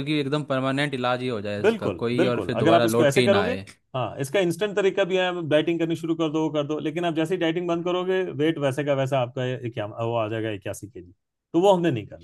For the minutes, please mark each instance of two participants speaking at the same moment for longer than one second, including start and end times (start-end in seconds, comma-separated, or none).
1.6-3.5